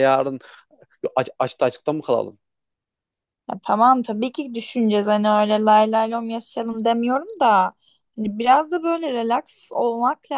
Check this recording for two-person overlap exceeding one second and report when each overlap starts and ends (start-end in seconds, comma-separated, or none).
none